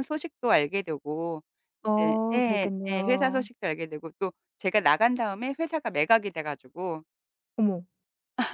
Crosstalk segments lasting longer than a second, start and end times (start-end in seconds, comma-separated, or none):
2.0-3.5